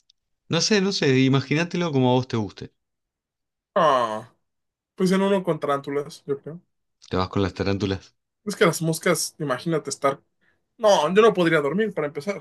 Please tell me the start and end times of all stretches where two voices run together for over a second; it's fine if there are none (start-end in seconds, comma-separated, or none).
none